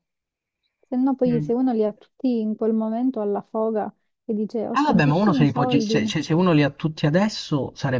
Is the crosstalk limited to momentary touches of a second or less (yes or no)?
no